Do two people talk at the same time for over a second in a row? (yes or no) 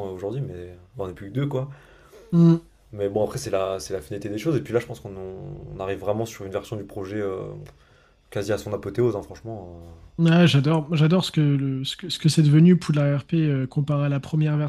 no